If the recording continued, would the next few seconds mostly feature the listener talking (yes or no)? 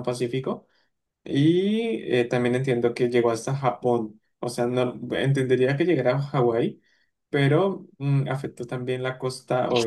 yes